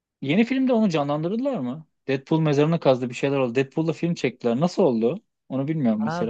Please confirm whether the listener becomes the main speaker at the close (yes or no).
yes